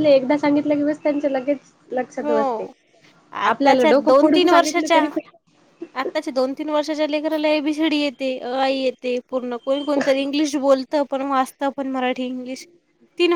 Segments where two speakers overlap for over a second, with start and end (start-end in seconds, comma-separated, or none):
3.5-5.0